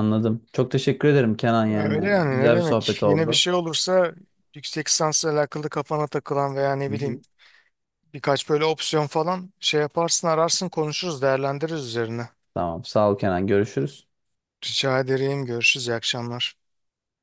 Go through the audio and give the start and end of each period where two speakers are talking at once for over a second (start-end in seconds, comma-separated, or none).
1.7-3.4